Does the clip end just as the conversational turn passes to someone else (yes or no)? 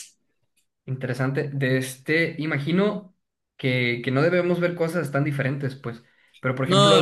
no